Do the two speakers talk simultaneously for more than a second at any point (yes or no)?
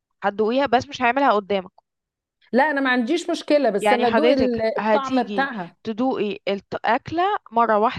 yes